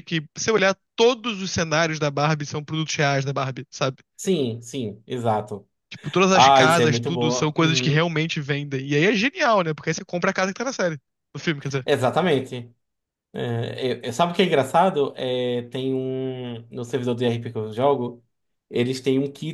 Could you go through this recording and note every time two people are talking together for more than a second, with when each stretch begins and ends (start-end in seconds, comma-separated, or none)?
6.3-8.0